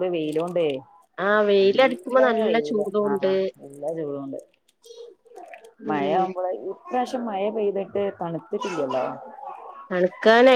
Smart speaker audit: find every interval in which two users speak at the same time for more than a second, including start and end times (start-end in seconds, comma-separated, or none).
1.6-3.1